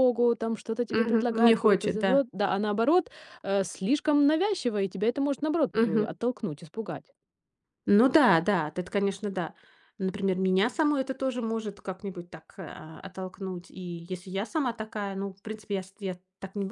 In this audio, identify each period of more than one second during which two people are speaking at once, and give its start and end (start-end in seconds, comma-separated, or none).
0.9-2.2